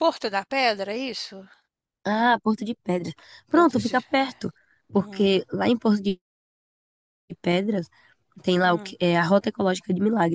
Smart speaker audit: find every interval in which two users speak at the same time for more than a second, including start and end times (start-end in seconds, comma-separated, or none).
none